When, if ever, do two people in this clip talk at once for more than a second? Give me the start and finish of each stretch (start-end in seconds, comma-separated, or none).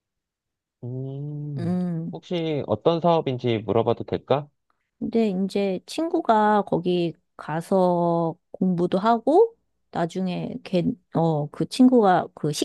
none